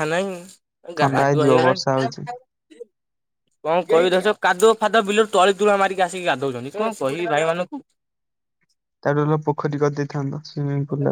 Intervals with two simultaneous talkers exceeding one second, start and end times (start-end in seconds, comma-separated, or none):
1.0-2.3